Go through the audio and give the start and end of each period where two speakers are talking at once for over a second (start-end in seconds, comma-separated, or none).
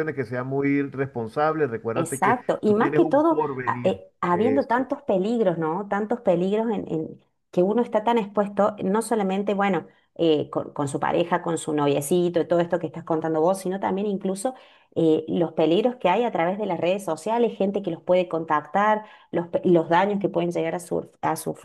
1.9-4.8